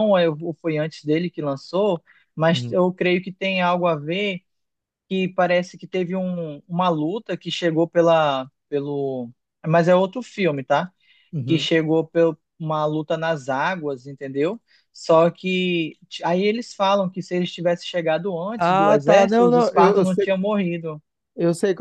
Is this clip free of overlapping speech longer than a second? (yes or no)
no